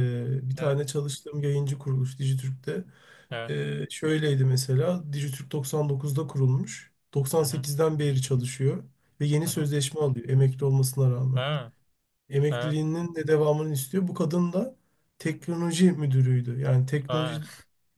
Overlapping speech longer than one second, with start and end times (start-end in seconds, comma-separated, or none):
none